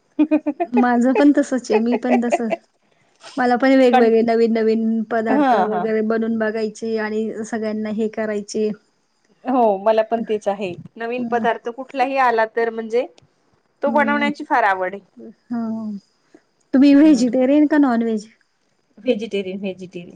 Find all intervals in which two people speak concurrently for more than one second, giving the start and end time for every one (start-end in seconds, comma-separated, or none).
13.9-15.1